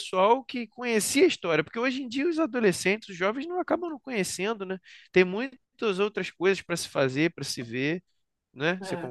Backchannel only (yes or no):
no